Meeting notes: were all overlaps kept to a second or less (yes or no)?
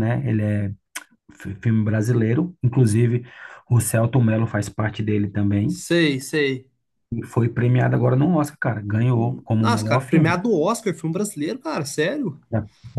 no